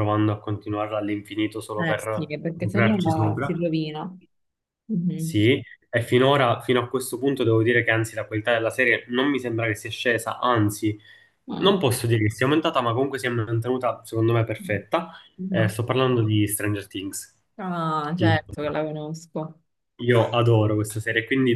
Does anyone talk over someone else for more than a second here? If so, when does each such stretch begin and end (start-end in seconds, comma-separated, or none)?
1.8-3.5